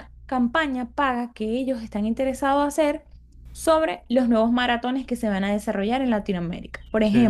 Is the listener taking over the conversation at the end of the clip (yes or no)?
no